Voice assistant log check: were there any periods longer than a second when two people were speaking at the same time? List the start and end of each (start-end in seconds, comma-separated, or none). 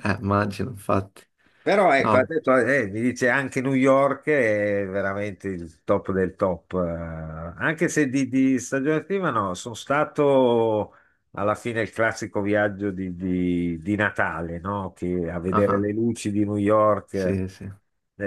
none